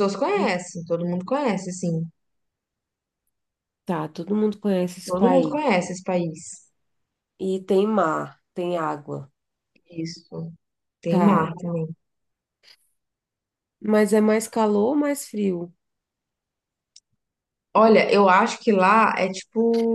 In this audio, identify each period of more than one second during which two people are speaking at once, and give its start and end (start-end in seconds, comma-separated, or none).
none